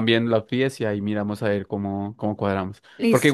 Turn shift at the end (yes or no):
no